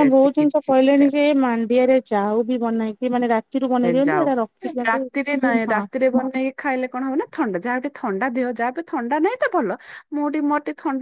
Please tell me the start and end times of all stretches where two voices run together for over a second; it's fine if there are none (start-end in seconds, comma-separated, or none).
none